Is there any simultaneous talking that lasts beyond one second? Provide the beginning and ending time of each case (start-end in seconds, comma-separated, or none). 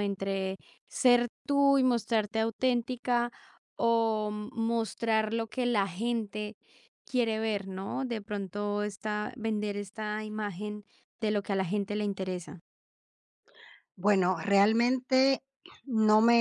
none